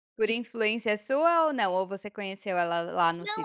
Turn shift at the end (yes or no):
yes